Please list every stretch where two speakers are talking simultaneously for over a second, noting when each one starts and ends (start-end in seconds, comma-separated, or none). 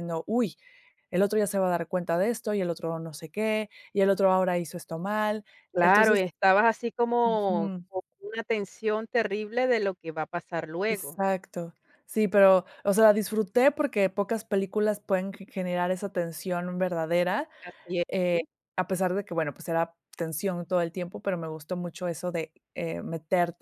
none